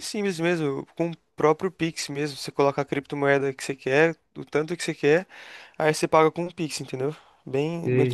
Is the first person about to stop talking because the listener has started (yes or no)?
yes